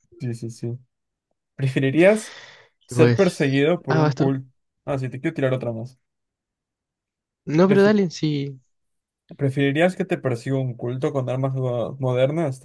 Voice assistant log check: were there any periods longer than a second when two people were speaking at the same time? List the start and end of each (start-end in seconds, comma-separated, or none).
2.9-4.3